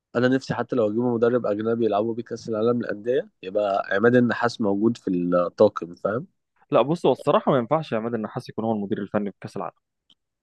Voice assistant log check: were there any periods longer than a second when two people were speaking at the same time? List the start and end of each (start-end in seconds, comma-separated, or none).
none